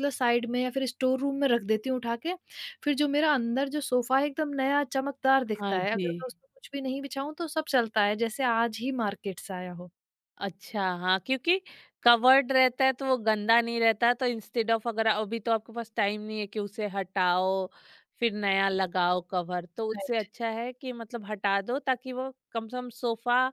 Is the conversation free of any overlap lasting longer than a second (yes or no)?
yes